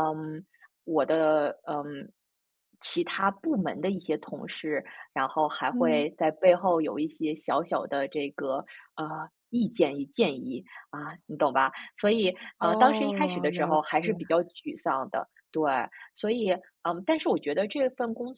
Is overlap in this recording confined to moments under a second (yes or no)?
no